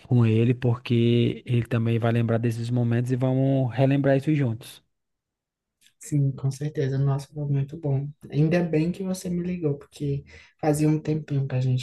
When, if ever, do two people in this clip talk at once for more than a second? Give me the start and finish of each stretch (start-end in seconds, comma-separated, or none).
none